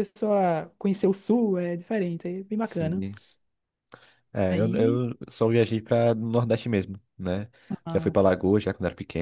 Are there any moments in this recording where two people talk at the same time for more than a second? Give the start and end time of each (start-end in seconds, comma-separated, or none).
none